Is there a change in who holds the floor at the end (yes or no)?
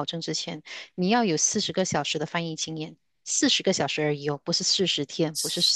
yes